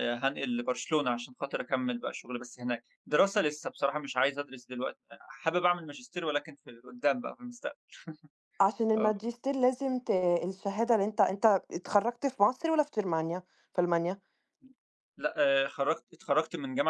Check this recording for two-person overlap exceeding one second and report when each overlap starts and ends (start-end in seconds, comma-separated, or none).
none